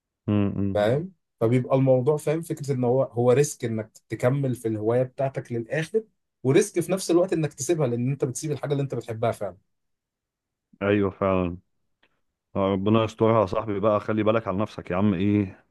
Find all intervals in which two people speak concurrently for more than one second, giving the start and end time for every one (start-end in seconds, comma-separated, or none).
none